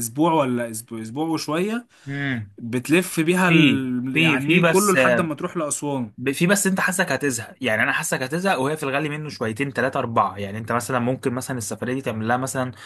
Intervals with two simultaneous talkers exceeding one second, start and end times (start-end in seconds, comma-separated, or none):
3.5-5.0